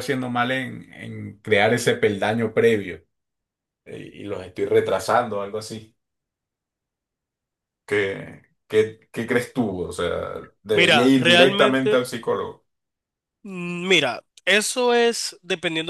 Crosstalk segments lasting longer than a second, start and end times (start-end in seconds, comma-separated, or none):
10.7-12.1